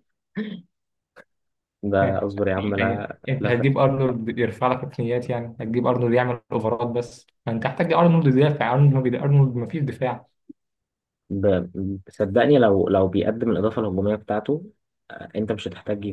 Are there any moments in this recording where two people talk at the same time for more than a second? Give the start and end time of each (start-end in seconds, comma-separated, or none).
2.0-3.7